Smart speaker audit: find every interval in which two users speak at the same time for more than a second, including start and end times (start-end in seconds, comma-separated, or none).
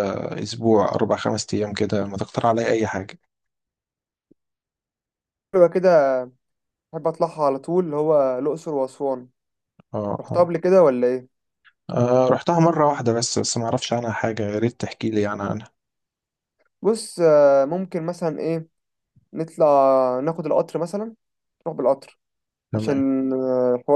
none